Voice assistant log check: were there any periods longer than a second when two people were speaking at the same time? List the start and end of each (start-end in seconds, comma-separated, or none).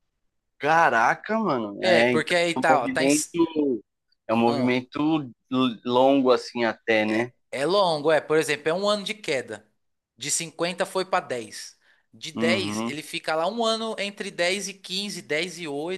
1.8-3.2